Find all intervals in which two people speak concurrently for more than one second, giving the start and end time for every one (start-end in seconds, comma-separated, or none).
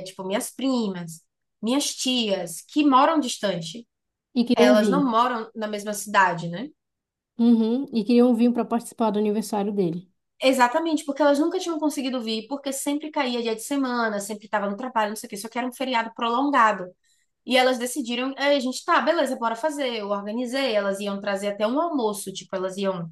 none